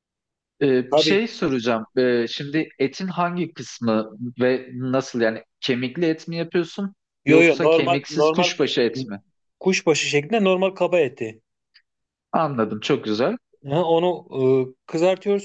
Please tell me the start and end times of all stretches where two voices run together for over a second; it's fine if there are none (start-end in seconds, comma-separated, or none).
7.2-8.5